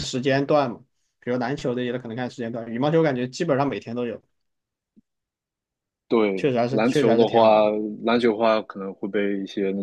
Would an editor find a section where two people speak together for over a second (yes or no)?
yes